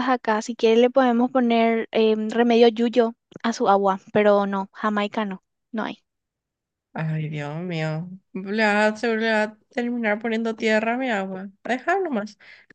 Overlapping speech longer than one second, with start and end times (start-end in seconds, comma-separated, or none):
none